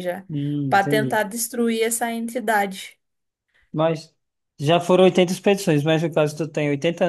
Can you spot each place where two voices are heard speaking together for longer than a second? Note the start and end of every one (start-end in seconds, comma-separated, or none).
none